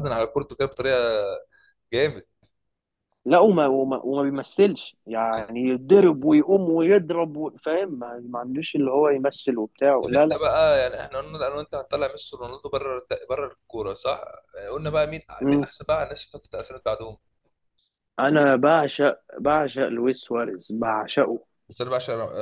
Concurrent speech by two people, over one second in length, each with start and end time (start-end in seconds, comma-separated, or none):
none